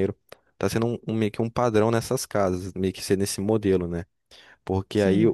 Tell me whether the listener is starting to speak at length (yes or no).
no